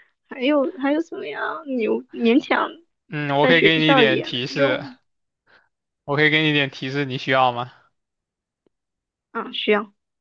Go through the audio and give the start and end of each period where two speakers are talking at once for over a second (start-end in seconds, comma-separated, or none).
3.4-4.8